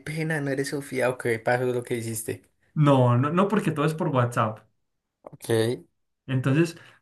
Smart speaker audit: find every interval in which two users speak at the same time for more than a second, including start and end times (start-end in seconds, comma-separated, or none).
none